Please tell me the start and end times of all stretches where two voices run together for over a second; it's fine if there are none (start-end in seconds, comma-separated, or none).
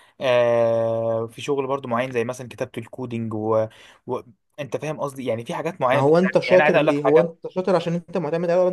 5.9-7.3